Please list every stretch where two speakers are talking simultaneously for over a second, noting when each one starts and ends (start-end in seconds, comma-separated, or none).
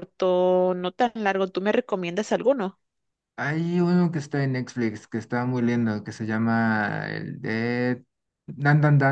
none